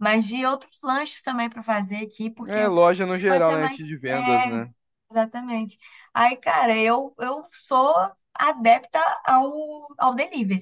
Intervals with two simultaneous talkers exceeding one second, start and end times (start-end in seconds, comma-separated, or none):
3.3-4.6